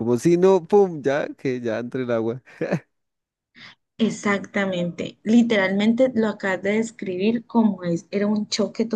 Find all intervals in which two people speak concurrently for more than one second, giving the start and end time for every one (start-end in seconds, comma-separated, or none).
none